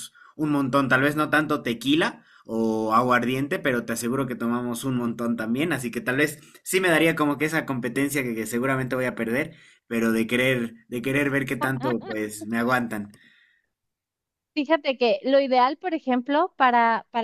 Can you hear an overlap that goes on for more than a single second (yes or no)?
no